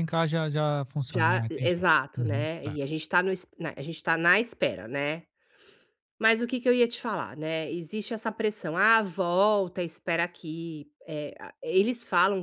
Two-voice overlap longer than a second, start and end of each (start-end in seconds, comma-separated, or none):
1.1-2.8